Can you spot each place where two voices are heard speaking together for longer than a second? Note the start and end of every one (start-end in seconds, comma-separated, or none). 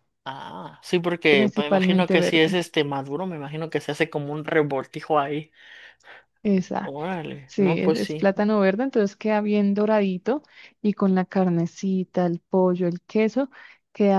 1.3-2.6, 6.8-8.3